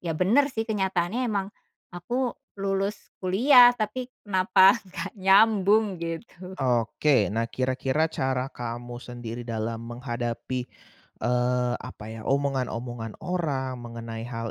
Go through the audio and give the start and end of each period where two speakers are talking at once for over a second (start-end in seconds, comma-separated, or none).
none